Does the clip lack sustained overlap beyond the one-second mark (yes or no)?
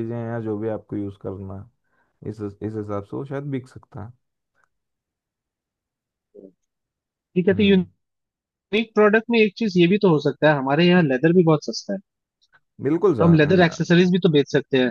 yes